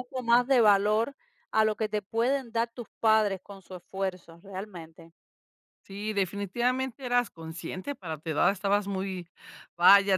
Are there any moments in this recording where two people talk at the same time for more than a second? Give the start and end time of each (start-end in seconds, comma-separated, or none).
none